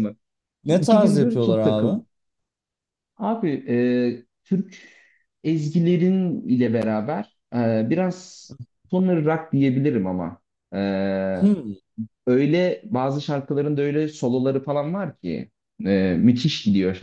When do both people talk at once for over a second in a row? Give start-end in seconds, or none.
0.7-2.0